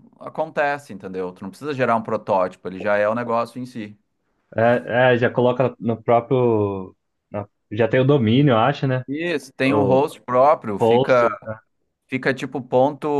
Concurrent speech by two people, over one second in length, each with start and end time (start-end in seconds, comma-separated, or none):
none